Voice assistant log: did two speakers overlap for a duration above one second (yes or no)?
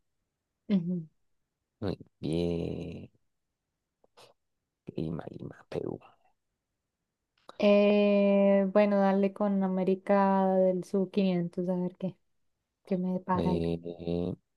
no